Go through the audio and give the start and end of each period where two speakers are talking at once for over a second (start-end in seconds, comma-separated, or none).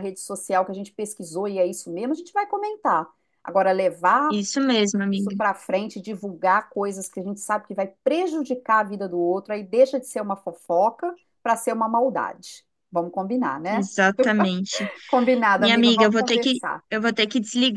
15.5-16.8